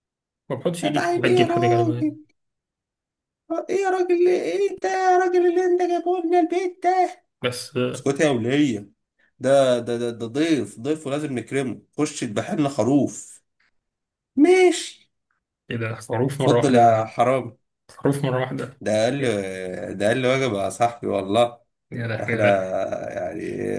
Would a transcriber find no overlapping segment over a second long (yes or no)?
no